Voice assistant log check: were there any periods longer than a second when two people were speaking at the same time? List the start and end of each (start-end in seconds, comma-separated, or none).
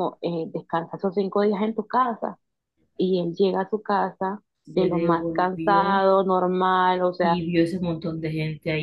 4.6-6.0